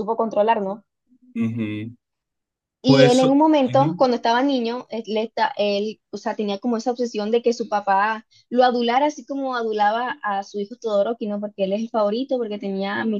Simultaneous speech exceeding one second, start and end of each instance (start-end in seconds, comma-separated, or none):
2.8-4.1